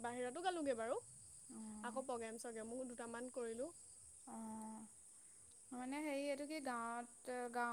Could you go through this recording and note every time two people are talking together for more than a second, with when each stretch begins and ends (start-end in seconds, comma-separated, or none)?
none